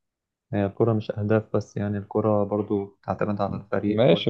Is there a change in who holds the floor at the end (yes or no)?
yes